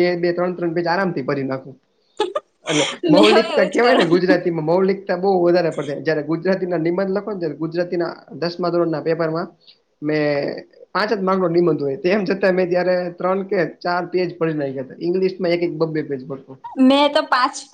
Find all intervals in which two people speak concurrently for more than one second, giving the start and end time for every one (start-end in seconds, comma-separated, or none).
3.1-4.5